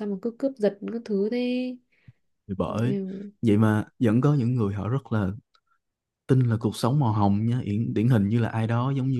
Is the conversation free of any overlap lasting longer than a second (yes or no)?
yes